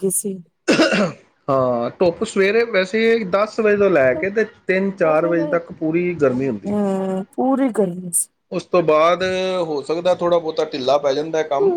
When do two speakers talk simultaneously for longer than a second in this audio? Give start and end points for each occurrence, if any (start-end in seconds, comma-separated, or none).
none